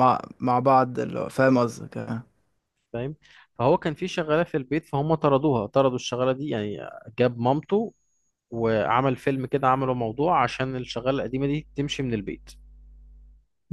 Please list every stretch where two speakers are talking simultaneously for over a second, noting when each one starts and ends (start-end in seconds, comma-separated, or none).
none